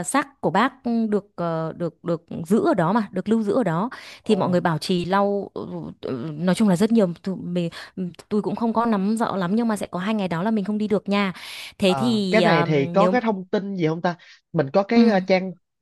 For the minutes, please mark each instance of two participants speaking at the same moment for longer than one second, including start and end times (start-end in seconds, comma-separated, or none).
11.8-13.1